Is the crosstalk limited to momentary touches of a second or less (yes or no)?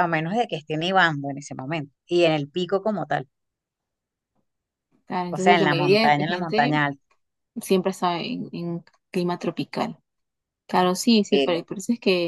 no